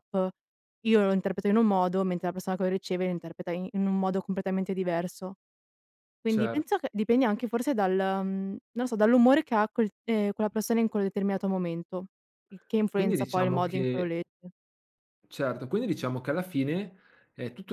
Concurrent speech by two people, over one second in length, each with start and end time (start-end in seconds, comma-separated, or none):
12.9-14.1